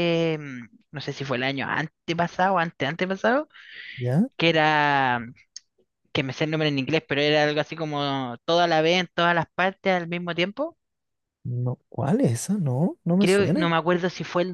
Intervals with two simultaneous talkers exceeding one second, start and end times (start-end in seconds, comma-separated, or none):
none